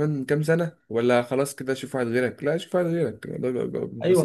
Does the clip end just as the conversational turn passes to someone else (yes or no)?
yes